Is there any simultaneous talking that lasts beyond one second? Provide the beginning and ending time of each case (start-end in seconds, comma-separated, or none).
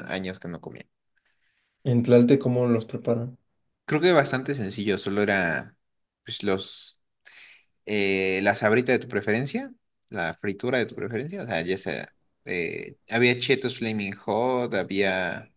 none